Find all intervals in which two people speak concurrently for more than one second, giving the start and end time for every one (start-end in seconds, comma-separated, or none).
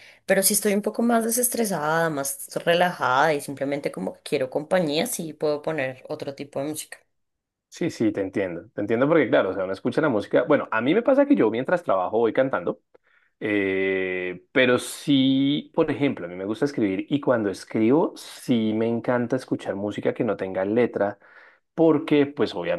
none